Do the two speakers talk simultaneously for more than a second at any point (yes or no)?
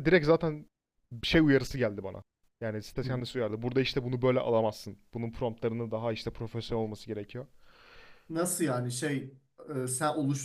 no